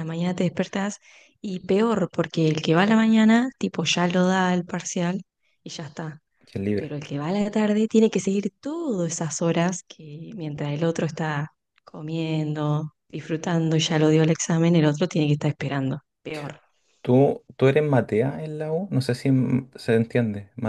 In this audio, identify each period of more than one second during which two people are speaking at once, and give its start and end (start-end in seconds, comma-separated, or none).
none